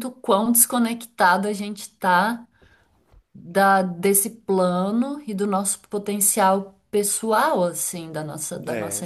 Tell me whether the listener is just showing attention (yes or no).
yes